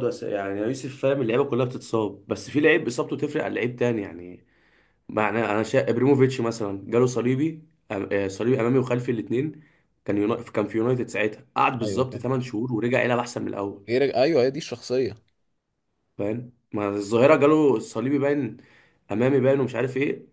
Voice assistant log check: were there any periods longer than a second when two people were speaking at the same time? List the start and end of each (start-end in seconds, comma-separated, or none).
none